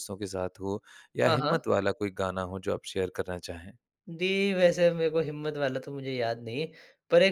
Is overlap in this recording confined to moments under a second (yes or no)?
yes